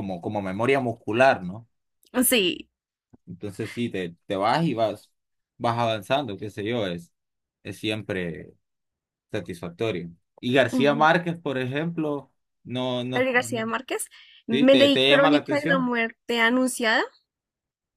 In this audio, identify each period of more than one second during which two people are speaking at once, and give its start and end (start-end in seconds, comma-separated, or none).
14.5-15.9